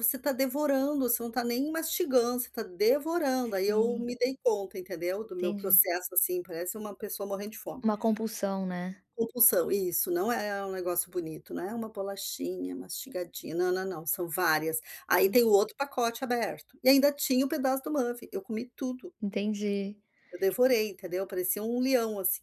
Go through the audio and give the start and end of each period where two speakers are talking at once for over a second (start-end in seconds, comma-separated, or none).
none